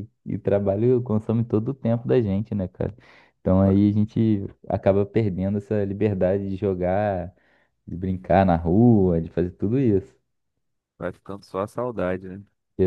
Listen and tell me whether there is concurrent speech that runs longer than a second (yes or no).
no